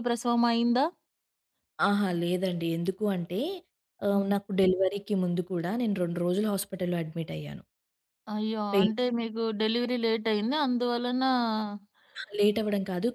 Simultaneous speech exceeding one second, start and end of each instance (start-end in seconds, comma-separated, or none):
none